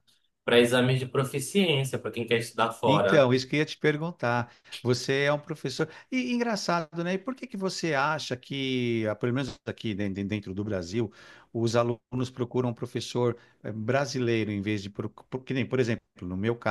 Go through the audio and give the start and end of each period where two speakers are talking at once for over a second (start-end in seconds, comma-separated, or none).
none